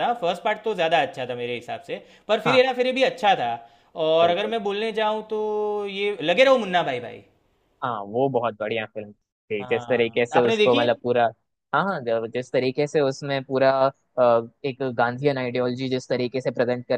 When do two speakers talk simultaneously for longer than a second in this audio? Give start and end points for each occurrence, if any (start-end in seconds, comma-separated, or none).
9.6-10.9